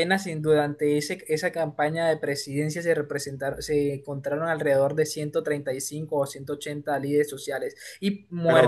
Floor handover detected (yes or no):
yes